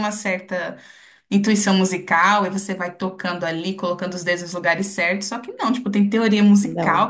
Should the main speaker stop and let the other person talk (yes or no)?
no